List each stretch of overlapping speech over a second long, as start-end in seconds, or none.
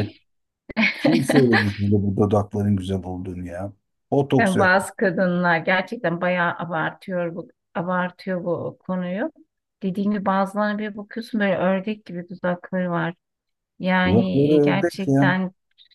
14.1-15.3